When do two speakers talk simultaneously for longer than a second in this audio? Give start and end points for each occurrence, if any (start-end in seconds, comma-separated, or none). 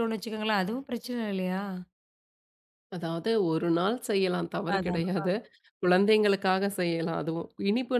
none